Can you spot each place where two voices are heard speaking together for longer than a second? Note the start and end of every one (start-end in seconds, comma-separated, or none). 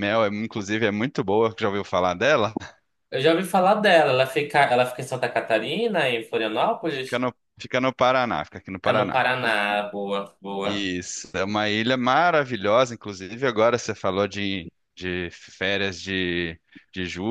none